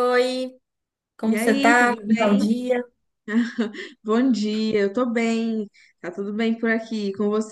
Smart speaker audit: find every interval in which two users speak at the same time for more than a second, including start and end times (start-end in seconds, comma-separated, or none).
1.2-2.5